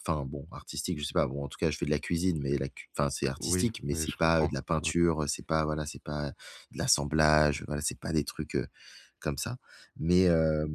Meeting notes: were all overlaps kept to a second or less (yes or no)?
no